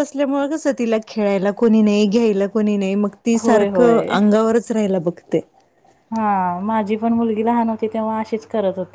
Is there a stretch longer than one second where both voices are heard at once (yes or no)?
no